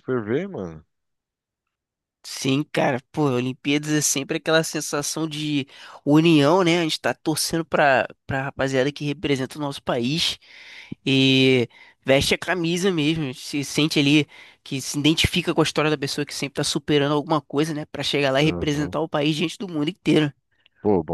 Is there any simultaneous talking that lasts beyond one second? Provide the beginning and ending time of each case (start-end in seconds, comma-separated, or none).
none